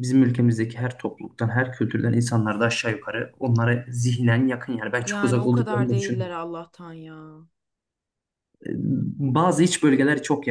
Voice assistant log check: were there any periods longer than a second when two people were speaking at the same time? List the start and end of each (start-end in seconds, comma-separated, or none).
5.0-6.4